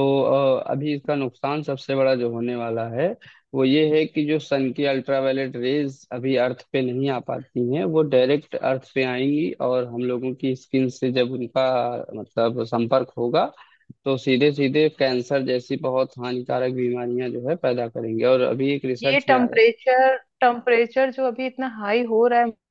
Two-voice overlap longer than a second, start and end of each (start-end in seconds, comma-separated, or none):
none